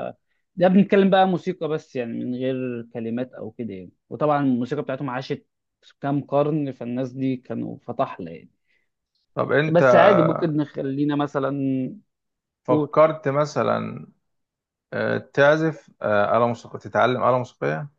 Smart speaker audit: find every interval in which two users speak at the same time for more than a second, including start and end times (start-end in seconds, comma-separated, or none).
none